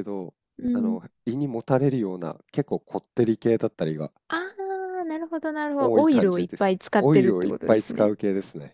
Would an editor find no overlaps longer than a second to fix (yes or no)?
no